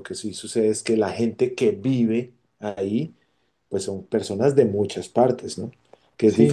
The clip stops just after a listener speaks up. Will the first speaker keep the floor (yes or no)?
no